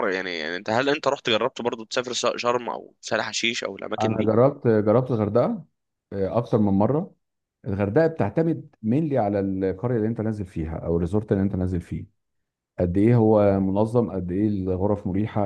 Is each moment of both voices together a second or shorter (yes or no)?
yes